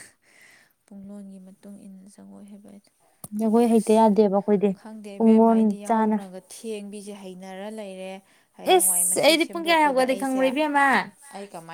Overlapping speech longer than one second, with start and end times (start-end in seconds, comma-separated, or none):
8.8-10.4